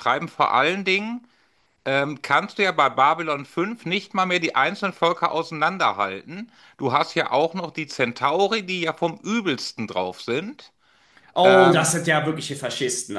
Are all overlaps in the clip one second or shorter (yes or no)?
yes